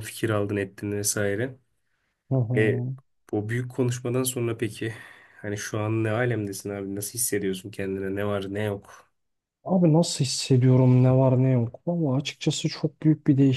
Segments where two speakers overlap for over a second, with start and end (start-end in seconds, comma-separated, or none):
none